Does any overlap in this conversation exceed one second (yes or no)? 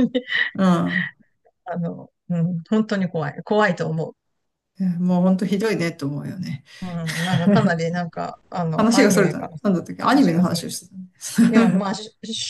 yes